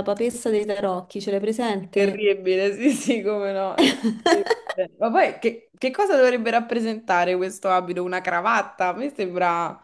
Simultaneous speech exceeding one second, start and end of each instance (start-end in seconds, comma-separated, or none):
none